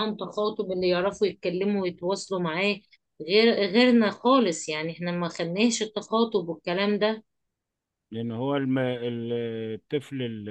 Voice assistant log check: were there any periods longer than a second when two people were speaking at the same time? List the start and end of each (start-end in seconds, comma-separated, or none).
none